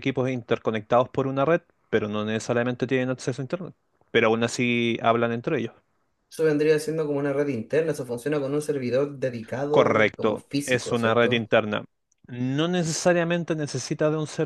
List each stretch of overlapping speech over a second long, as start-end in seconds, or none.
9.7-11.5